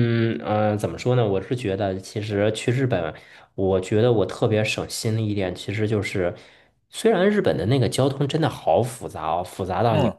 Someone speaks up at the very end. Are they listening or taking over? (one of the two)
listening